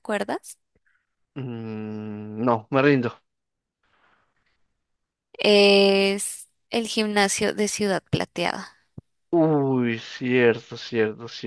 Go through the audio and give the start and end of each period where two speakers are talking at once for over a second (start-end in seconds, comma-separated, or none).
none